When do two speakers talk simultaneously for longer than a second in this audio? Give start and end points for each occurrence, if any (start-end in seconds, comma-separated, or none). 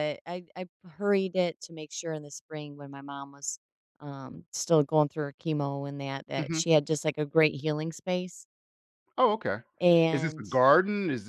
none